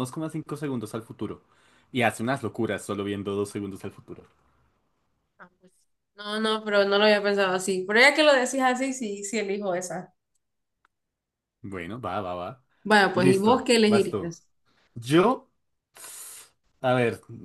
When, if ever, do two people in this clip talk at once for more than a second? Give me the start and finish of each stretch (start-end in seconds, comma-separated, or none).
13.1-14.3